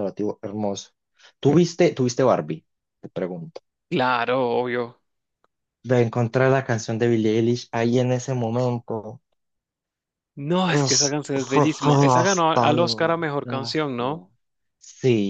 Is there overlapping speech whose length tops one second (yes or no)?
yes